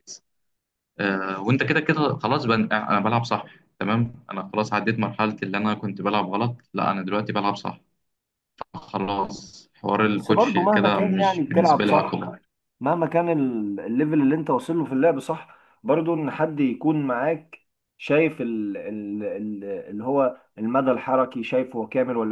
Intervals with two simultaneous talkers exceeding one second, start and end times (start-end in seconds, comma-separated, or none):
10.1-12.2